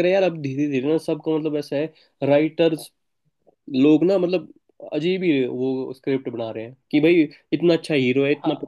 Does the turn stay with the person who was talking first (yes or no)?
yes